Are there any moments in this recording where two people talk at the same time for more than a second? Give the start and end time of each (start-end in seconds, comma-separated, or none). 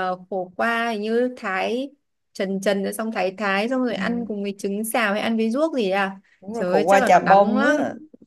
6.4-7.8